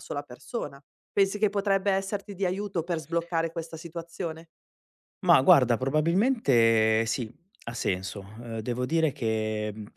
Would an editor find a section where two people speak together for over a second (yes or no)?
no